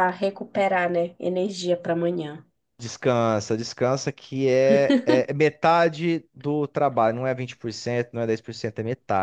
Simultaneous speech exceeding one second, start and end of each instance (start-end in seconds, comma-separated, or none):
none